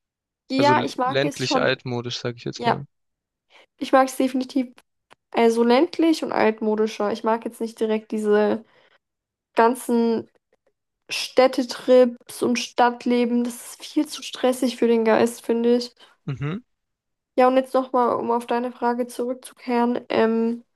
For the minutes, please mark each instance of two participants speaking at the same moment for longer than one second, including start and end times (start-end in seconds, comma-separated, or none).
0.6-1.8